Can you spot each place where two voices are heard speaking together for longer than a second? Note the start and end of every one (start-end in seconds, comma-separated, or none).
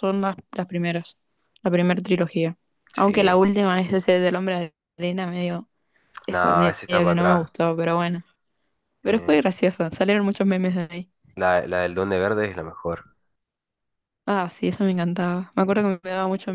6.3-7.5